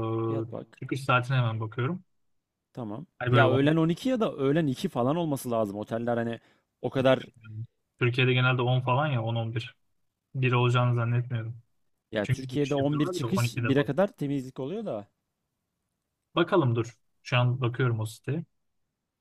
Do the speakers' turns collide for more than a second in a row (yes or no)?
yes